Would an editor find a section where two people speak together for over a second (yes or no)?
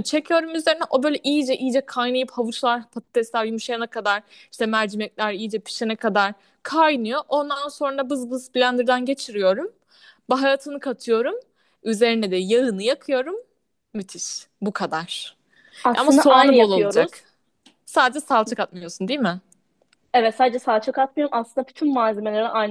yes